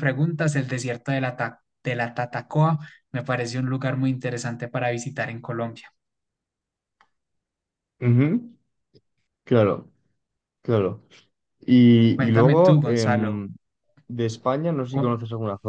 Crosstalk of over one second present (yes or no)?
yes